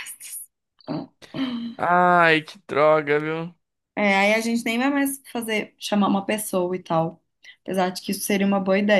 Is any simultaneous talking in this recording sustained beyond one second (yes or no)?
no